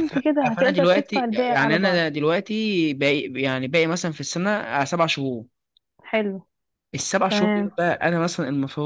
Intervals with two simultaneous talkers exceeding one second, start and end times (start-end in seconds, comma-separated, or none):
0.6-2.0